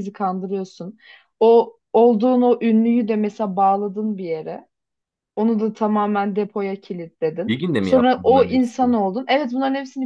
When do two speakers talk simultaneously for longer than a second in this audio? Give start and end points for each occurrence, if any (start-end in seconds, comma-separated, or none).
7.5-9.0